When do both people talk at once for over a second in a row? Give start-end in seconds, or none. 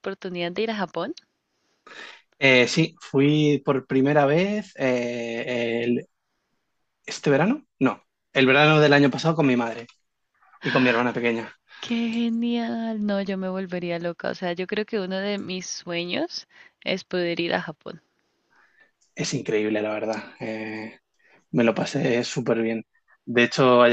none